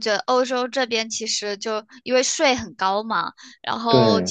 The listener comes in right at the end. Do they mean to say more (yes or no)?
no